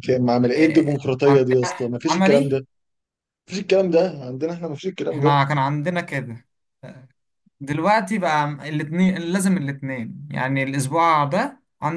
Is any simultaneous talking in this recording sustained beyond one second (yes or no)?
yes